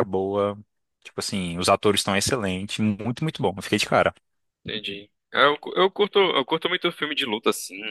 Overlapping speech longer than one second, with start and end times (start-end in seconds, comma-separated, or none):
none